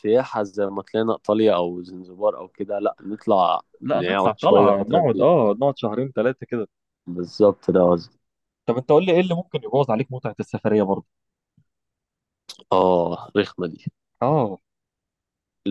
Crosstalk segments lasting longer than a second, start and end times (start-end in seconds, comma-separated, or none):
3.8-5.3